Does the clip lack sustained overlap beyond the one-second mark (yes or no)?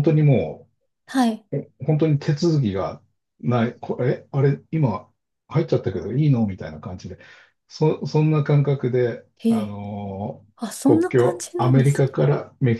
no